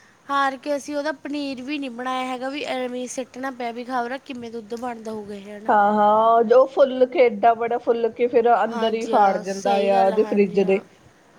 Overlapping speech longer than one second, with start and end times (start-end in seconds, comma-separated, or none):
8.7-10.8